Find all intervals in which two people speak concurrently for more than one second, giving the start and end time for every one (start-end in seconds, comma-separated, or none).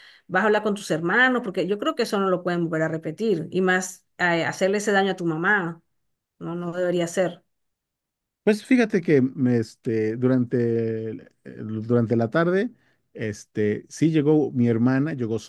none